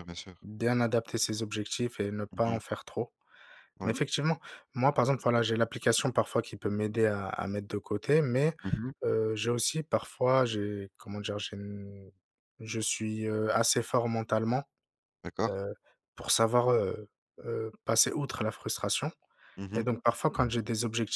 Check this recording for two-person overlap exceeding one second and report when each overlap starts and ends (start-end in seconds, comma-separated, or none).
none